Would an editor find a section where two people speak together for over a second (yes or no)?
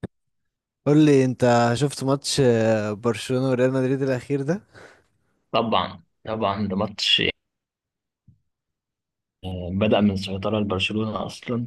no